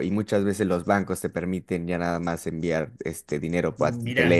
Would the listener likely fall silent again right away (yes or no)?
no